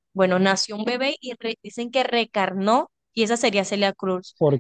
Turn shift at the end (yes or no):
no